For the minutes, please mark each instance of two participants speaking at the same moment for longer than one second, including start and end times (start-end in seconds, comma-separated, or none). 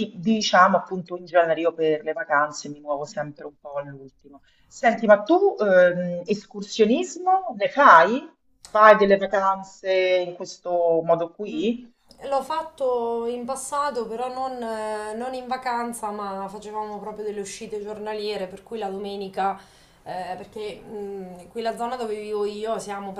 none